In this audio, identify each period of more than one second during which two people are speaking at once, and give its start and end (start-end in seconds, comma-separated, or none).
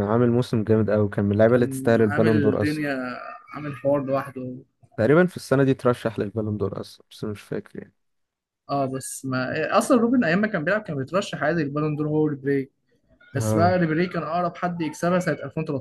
1.5-2.8